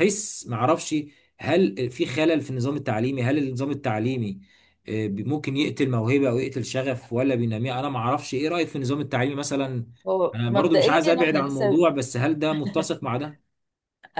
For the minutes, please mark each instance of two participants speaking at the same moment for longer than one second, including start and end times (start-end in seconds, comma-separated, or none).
10.3-11.8